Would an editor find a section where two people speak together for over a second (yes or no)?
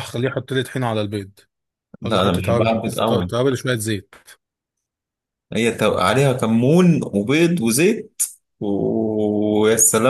yes